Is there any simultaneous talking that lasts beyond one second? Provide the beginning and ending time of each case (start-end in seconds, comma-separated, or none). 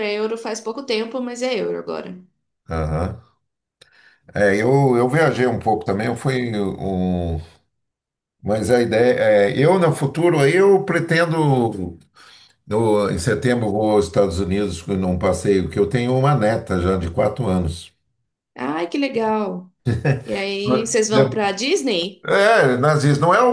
none